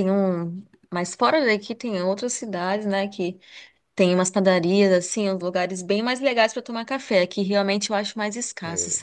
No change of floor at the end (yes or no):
yes